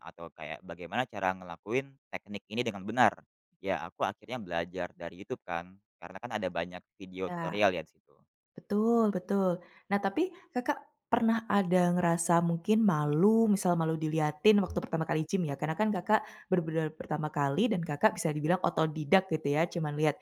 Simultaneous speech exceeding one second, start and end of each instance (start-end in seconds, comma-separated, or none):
none